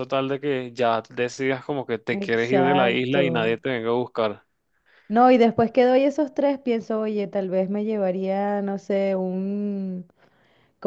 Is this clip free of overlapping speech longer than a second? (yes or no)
no